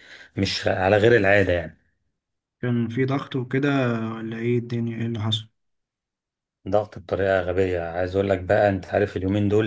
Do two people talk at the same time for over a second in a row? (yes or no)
no